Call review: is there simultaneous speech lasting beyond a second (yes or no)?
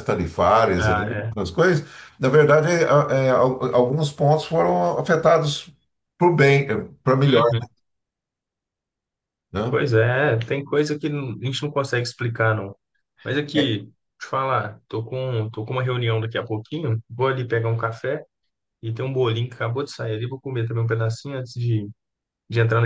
no